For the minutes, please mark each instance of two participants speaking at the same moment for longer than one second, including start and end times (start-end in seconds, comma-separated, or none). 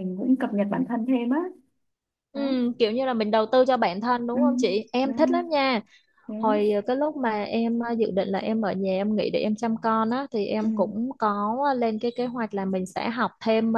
none